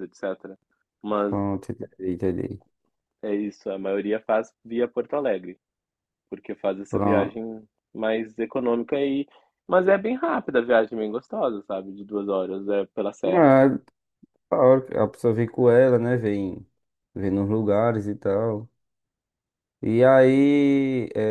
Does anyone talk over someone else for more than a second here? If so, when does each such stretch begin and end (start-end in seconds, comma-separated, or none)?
none